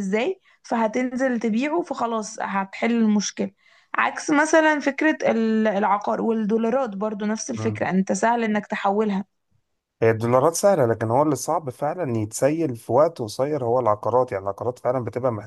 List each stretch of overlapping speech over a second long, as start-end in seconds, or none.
none